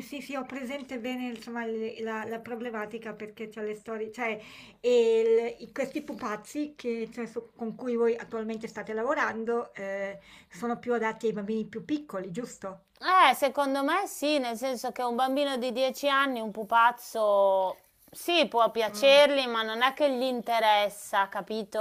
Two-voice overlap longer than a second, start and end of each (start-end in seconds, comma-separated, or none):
none